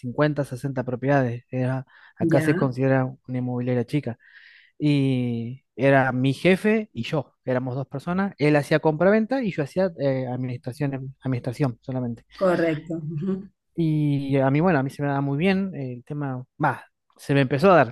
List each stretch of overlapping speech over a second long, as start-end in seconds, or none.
none